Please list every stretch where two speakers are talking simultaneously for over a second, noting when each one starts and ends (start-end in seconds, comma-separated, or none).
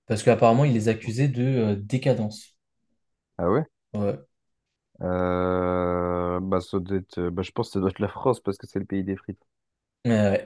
none